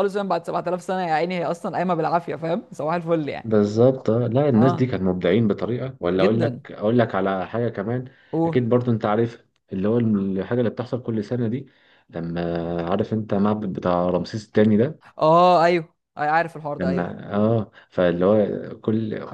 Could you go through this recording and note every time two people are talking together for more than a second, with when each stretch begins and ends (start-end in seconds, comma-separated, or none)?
none